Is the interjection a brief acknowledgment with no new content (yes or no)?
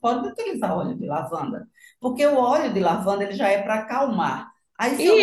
no